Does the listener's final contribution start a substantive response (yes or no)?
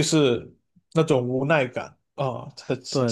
yes